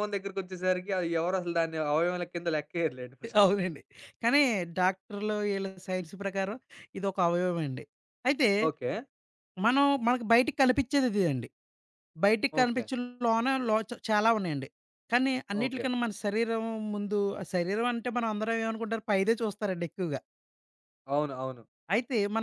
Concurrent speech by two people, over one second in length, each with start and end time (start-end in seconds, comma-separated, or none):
none